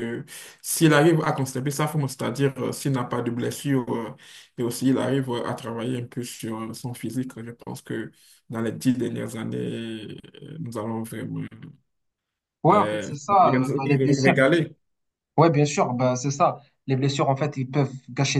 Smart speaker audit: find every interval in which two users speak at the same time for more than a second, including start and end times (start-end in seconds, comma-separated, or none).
12.7-14.3